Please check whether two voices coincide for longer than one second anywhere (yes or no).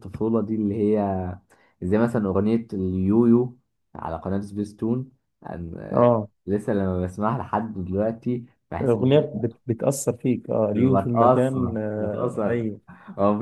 yes